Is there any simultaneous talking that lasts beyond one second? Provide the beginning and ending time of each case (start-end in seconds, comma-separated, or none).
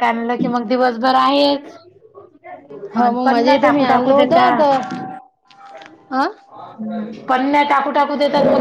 3.2-4.5